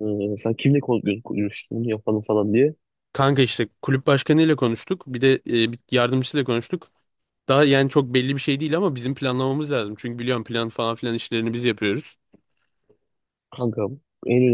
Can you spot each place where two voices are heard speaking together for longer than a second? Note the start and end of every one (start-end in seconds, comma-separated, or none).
none